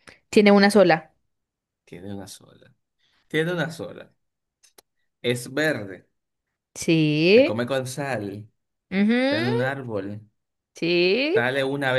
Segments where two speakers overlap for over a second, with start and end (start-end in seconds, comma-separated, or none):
none